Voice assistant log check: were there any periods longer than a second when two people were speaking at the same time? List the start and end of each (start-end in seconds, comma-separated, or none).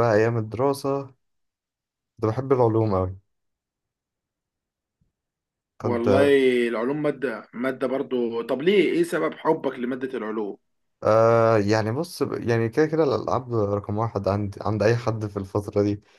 none